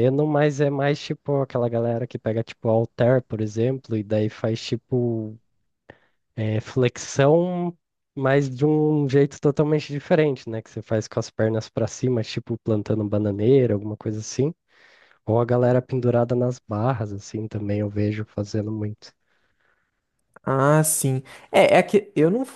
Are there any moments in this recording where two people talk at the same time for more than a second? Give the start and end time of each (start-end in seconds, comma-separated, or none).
none